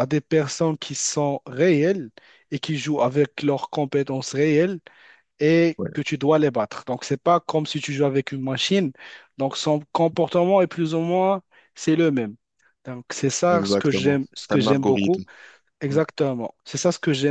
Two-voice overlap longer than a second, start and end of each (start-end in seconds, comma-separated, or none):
13.5-15.2